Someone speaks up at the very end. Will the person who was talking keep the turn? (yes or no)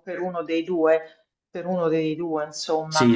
no